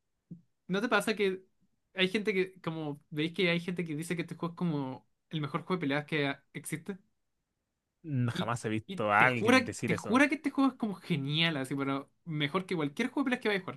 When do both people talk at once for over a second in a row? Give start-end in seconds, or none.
8.3-10.2